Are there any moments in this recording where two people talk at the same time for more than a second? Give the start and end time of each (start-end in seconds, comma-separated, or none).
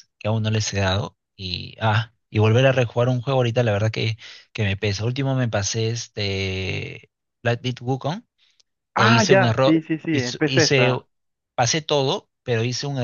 8.9-10.9